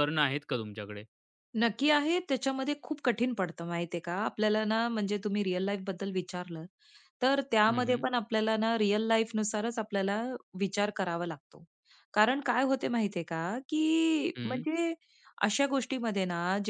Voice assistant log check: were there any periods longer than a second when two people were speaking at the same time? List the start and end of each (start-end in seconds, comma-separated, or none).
none